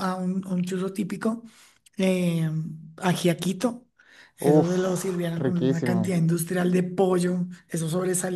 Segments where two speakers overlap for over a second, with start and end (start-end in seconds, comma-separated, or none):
4.5-6.2